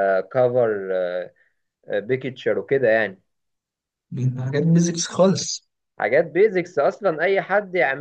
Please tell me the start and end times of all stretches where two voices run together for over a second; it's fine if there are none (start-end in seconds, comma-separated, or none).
none